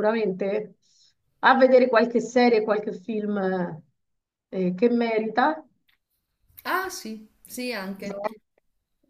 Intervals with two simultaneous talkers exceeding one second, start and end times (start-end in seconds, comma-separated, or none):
none